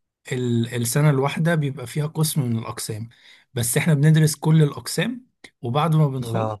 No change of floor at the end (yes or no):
yes